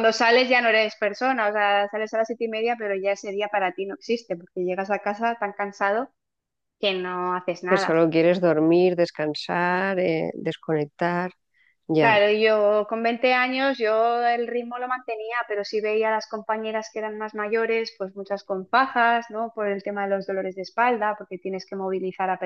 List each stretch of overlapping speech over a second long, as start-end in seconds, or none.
none